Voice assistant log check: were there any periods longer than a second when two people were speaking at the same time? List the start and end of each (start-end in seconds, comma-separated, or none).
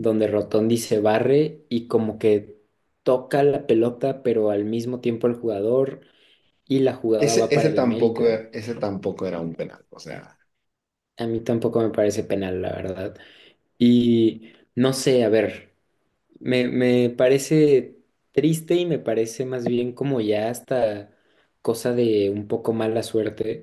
7.2-8.4